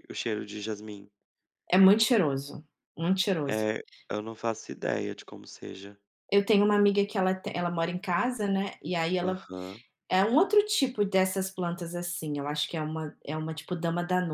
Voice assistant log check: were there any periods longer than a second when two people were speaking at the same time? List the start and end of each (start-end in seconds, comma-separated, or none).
none